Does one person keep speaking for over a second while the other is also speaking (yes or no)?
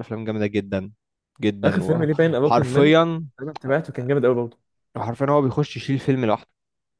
yes